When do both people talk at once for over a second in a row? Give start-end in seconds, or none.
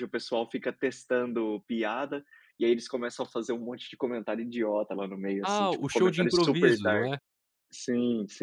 5.4-7.1